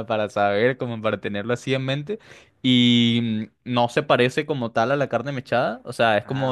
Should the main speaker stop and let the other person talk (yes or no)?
no